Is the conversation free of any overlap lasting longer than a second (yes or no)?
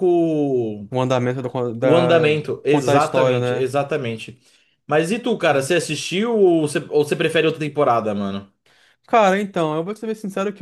no